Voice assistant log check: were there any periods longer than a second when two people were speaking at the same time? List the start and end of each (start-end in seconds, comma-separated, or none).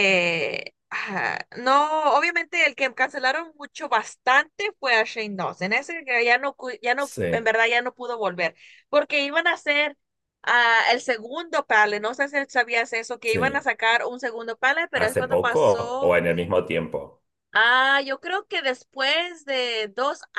14.9-16.2